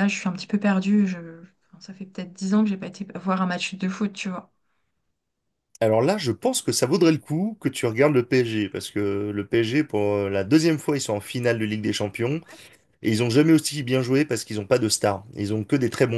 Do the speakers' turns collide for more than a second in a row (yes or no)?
no